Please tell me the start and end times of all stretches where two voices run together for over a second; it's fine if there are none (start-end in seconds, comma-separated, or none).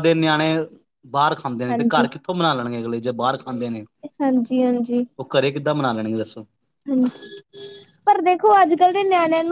none